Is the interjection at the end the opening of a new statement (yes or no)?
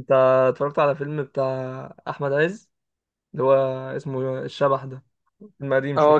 yes